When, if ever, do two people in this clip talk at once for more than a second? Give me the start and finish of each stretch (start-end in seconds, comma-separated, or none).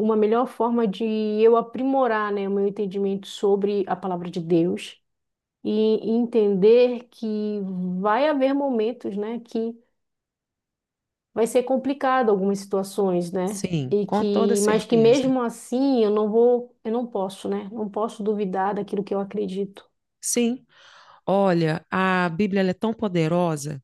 13.4-15.4